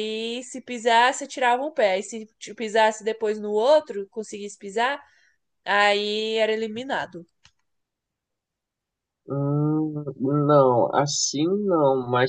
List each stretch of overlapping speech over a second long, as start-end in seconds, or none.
none